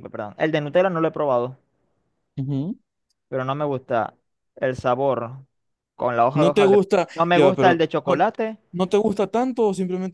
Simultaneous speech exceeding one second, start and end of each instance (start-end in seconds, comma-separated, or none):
6.3-8.2